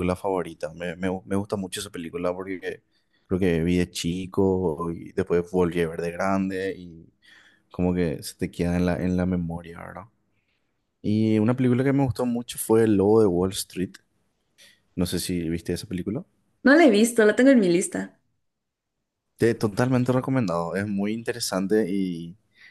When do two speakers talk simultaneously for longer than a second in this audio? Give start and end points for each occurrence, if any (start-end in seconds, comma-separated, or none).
none